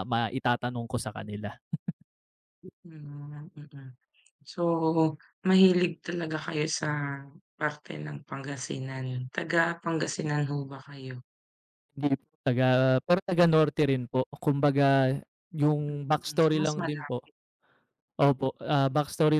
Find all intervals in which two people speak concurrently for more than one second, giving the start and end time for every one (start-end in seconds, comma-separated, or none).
15.9-17.2